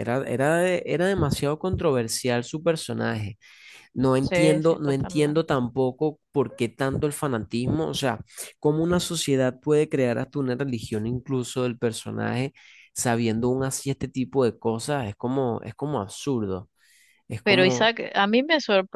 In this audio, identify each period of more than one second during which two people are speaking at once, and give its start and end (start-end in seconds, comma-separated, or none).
4.2-5.5